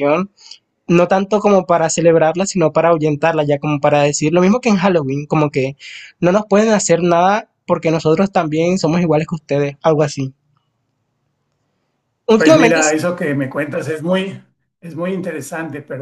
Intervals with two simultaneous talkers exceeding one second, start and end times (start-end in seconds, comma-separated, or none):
none